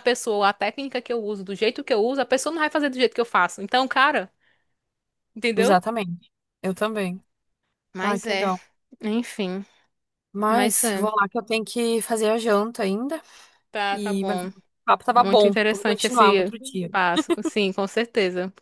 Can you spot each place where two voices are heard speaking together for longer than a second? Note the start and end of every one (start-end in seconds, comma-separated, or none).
15.1-16.5